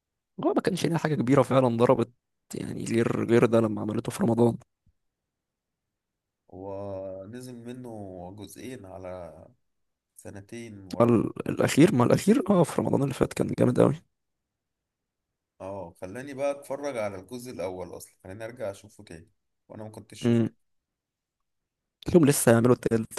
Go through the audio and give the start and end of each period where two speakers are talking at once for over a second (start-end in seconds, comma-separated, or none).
none